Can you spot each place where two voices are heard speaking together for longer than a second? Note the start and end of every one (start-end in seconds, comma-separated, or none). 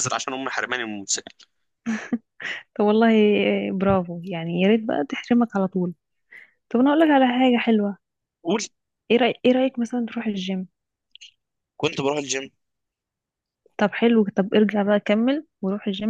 none